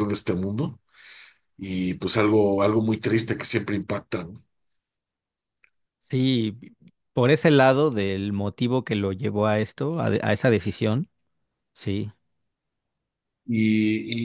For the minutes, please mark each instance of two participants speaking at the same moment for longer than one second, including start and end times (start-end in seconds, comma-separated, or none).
none